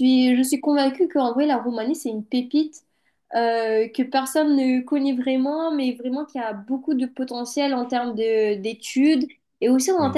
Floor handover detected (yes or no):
no